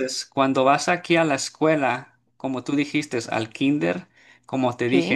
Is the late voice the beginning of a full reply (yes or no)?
no